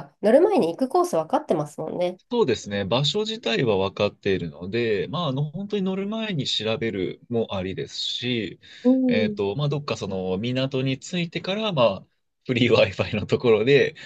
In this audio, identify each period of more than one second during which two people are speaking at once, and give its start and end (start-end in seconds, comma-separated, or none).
none